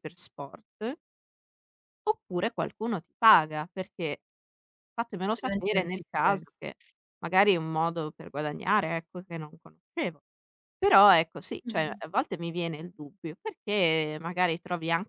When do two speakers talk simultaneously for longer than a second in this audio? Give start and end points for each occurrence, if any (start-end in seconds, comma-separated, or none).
5.2-6.4